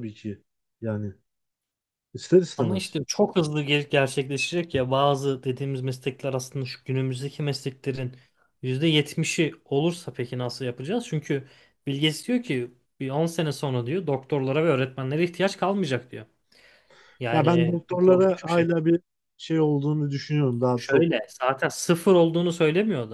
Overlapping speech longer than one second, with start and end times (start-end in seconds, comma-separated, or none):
17.3-18.7